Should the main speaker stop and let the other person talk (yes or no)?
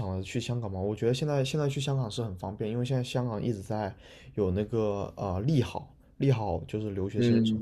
yes